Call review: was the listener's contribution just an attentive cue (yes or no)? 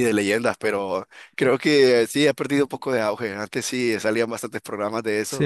no